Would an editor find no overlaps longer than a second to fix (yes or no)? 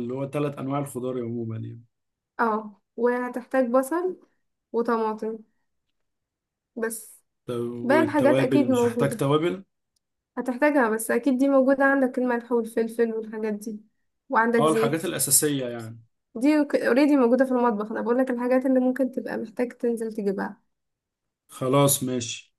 no